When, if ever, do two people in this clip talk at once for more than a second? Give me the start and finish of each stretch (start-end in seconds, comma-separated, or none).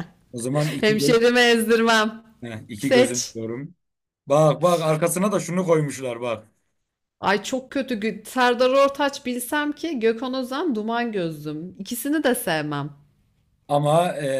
none